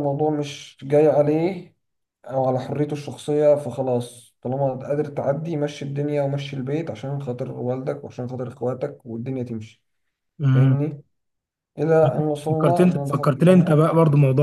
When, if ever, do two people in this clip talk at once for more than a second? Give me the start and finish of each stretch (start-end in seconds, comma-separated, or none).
12.5-13.9